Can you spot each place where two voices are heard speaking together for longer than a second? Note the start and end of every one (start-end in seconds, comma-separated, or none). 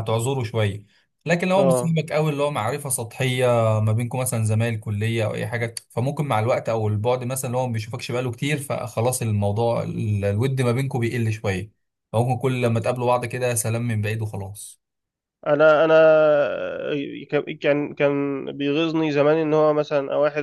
none